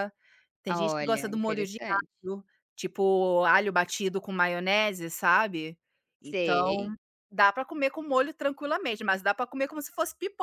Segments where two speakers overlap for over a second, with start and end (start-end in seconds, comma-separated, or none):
0.7-2.1